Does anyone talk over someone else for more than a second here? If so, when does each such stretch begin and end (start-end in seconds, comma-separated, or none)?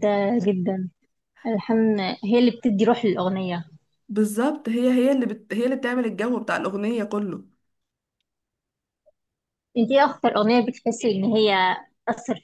none